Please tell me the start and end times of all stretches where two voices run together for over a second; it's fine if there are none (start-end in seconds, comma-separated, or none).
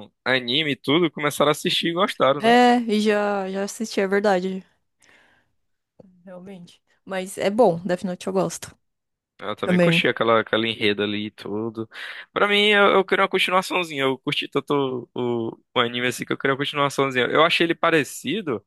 none